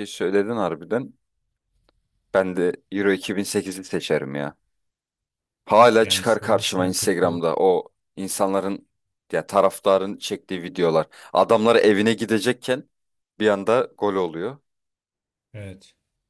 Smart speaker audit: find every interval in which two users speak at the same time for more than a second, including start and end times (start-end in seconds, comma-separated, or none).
6.0-7.4